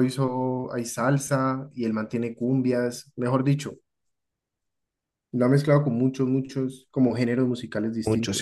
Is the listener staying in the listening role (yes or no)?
no